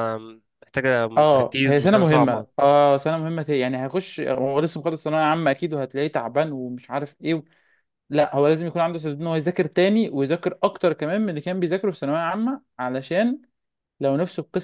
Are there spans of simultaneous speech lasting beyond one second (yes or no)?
yes